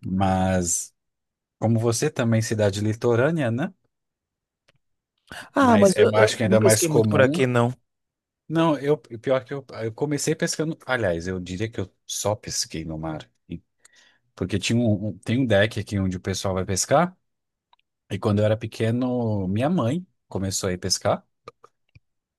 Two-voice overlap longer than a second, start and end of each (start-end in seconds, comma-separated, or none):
5.6-7.3